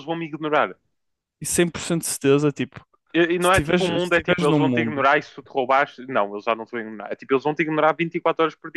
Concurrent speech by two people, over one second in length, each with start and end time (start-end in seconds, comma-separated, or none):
3.4-5.0